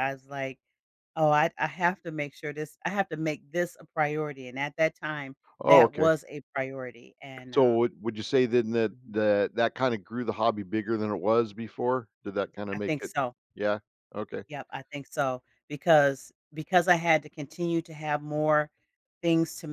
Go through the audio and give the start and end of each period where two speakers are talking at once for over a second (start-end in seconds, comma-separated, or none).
none